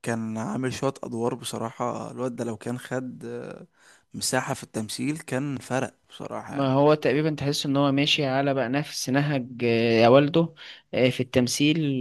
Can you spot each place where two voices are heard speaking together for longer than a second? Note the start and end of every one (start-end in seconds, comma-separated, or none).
none